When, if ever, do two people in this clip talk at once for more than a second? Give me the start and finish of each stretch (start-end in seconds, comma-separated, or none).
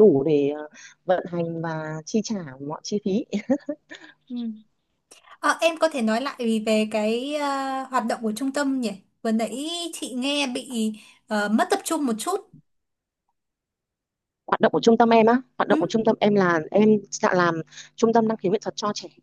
none